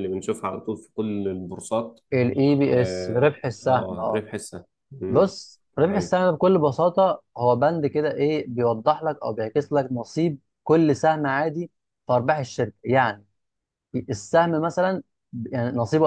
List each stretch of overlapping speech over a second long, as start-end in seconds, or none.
2.7-4.2